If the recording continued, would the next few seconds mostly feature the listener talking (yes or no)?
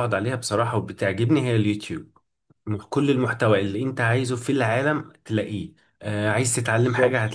no